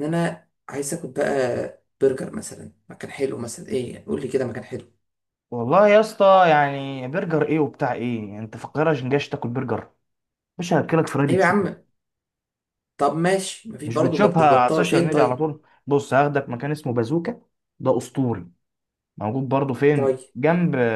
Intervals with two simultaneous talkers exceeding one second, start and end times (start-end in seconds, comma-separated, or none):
13.8-15.5